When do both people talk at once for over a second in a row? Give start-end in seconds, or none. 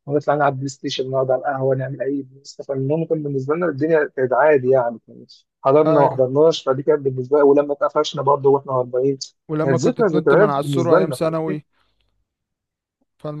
9.6-11.1